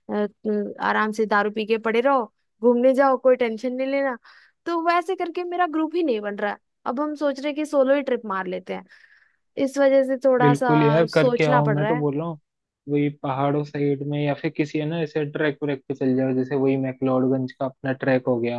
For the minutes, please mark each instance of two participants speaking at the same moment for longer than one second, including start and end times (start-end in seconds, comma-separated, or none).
10.4-12.0